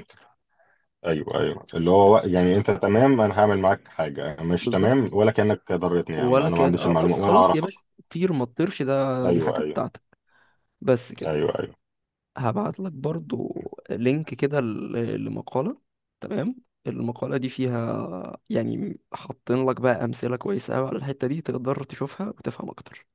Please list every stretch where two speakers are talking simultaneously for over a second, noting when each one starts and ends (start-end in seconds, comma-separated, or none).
6.2-7.7